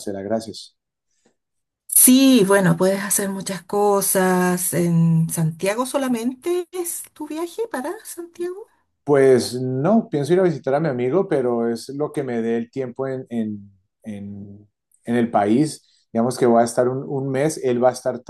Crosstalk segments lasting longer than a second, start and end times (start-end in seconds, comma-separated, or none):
none